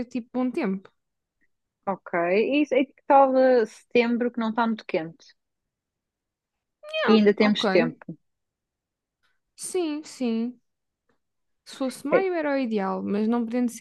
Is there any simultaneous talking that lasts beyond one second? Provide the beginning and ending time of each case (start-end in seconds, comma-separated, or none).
none